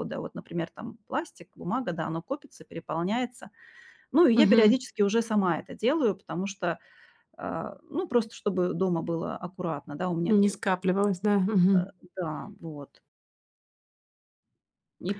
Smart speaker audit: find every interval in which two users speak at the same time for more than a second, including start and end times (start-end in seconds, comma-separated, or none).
none